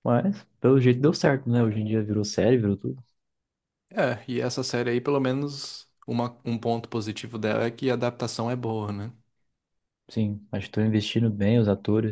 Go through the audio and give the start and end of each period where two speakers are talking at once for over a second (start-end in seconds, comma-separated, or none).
none